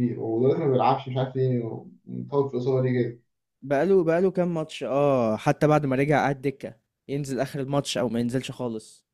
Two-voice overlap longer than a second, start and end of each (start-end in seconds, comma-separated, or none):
none